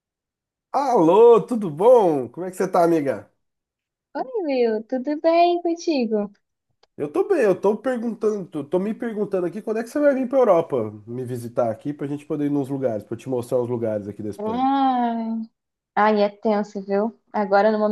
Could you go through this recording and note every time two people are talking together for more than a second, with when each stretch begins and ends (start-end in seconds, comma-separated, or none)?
none